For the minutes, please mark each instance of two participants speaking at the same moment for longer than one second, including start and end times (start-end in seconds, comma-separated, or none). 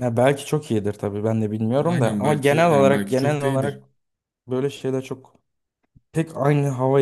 1.9-3.8